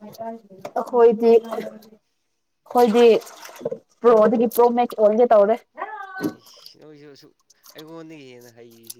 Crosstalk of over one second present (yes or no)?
no